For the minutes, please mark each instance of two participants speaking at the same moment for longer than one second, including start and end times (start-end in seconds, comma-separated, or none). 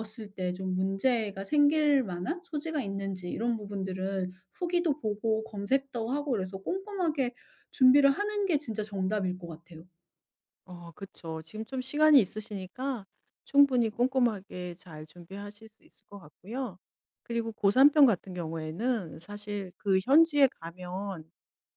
none